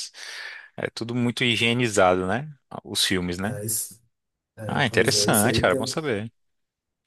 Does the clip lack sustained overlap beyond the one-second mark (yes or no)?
no